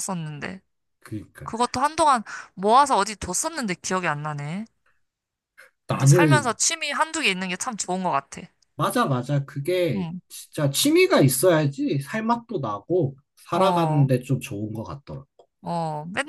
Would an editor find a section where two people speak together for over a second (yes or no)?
no